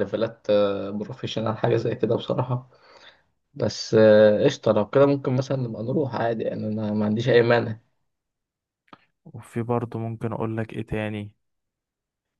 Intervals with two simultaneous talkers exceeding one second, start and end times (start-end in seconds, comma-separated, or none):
none